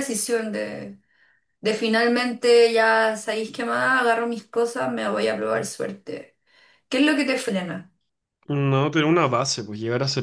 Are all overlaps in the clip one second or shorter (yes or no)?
yes